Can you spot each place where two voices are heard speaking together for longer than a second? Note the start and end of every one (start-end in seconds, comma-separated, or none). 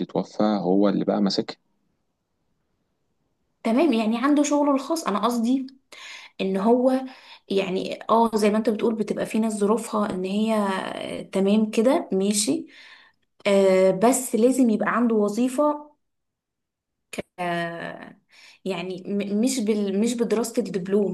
none